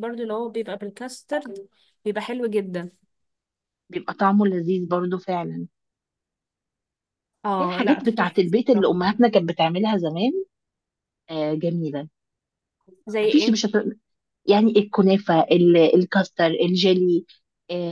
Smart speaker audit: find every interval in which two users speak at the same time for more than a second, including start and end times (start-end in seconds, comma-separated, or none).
7.6-9.0